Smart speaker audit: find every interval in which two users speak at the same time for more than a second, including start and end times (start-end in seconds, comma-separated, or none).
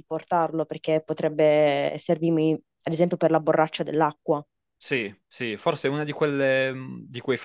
none